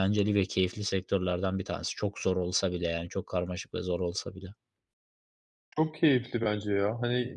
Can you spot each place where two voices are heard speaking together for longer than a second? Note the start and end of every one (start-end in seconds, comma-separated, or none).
none